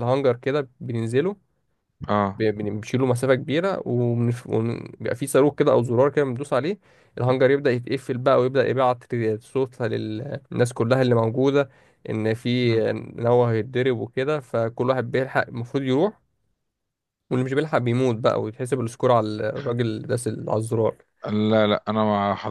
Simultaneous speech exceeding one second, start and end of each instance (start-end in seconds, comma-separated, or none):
none